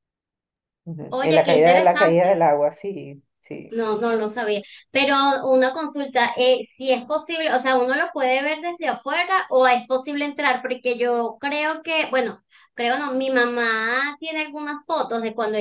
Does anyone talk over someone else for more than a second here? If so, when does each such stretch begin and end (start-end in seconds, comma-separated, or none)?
1.1-2.5